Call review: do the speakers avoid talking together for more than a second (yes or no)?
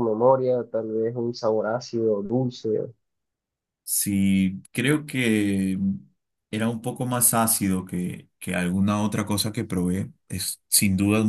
yes